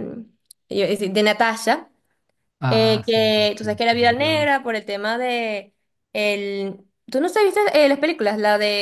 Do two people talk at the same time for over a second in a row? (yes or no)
yes